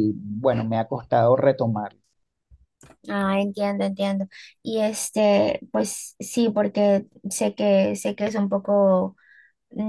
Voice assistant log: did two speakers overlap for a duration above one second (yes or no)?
no